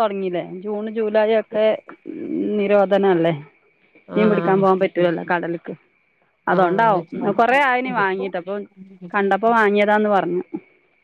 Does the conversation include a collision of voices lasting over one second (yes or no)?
yes